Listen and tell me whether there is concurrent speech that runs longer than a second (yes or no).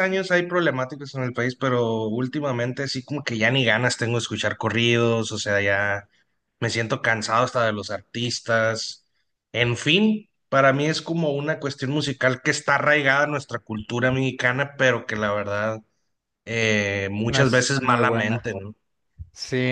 yes